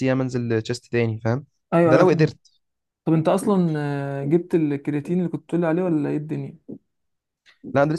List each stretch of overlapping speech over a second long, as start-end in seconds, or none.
none